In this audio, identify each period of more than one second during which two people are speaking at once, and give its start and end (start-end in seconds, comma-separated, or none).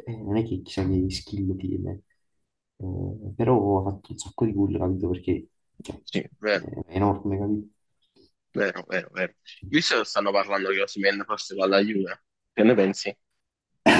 none